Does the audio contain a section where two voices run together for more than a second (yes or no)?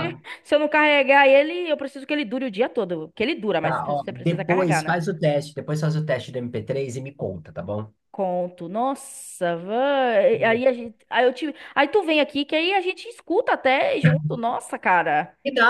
yes